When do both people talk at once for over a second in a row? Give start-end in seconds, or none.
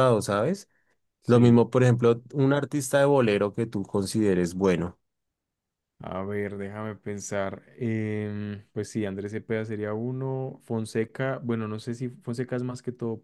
none